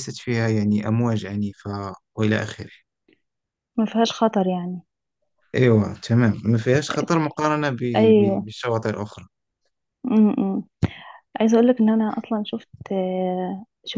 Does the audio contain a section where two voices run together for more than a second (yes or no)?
no